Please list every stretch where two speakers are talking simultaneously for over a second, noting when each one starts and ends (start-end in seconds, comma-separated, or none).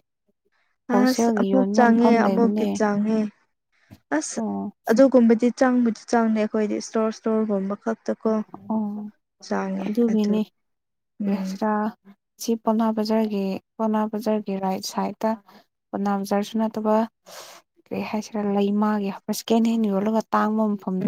1.0-2.7